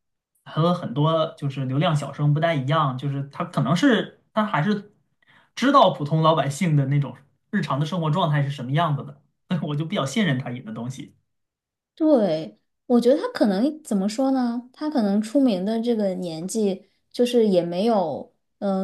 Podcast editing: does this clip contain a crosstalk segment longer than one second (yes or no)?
no